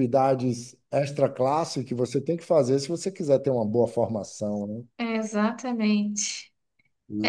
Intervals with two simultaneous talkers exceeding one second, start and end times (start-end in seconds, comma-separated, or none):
none